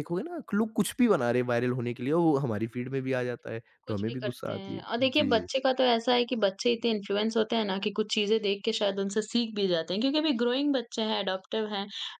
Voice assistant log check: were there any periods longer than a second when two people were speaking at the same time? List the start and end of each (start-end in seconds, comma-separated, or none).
3.9-5.5